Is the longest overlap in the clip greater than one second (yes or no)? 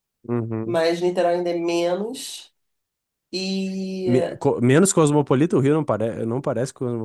no